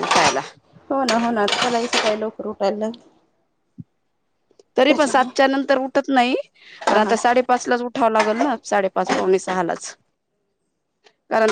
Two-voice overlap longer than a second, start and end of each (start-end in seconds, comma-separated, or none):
none